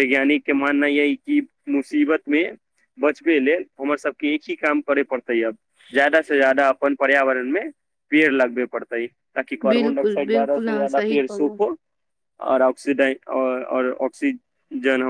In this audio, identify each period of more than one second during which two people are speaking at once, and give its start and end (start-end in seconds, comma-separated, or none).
9.7-11.6